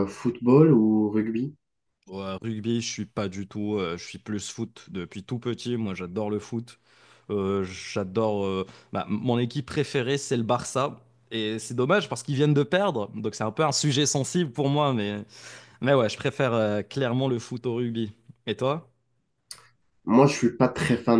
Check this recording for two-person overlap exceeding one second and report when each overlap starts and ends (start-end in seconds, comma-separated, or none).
none